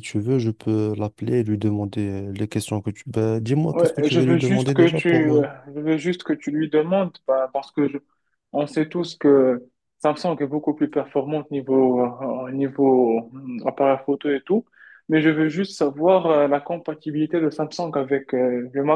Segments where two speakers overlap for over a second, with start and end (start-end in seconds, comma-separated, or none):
3.7-5.5